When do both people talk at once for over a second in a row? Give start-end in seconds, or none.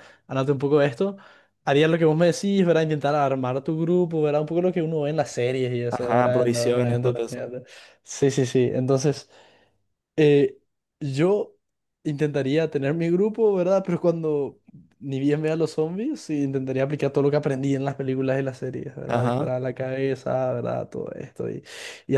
5.9-7.5